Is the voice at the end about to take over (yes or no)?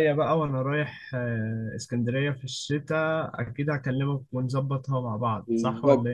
yes